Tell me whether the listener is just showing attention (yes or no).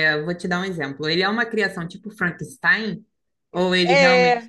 no